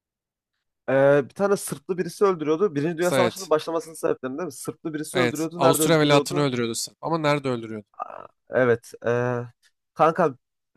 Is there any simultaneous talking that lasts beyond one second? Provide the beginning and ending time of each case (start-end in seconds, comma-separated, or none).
5.1-6.5